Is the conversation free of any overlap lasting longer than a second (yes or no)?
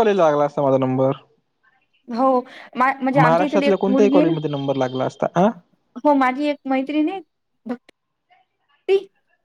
no